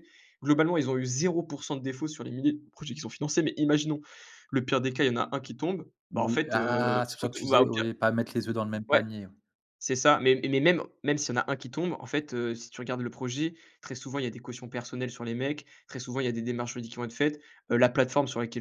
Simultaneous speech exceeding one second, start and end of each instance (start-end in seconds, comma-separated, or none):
6.1-7.8